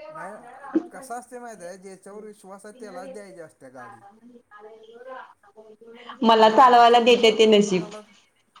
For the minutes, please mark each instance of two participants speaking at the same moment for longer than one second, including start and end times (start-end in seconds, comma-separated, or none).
6.4-7.9